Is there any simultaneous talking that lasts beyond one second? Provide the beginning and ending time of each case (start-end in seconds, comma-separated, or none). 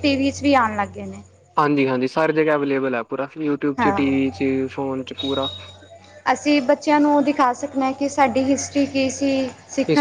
none